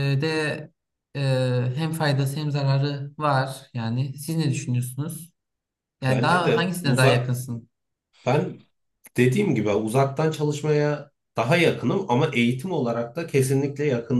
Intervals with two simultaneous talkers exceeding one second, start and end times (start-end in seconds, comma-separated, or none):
6.1-7.3